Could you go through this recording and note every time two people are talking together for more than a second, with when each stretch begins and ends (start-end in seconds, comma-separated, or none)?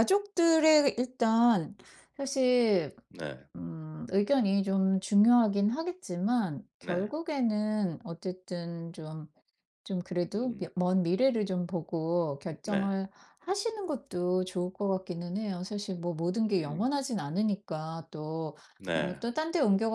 none